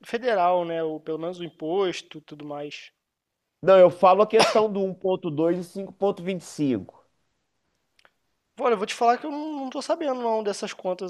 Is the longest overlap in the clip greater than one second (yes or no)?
no